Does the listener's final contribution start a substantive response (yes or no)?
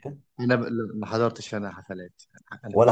no